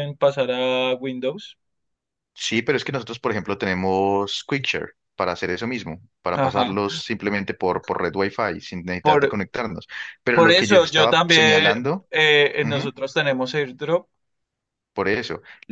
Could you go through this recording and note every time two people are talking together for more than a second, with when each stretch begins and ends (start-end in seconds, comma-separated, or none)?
10.3-12.1